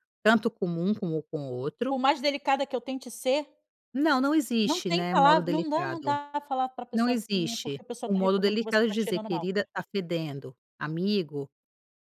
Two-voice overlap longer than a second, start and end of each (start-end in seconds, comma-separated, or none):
4.7-6.2, 6.9-9.5